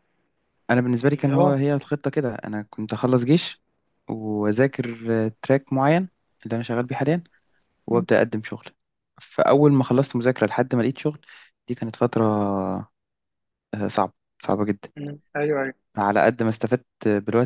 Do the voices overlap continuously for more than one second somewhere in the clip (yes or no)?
no